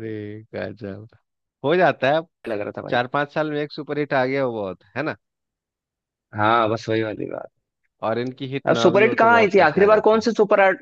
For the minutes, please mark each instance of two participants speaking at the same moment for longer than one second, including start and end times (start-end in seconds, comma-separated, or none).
8.7-10.3